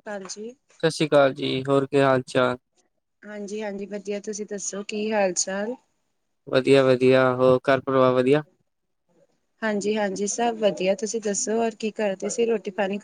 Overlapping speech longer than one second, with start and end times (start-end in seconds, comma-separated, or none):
none